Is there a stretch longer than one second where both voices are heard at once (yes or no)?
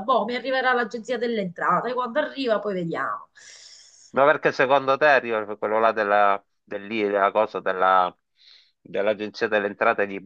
no